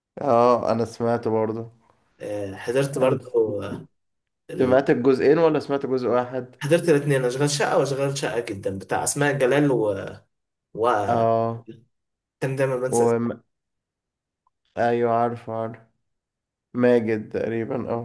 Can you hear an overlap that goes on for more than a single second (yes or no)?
no